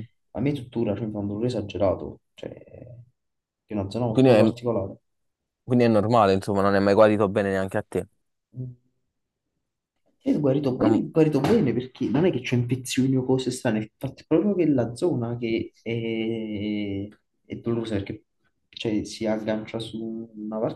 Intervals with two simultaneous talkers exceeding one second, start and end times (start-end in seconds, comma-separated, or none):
none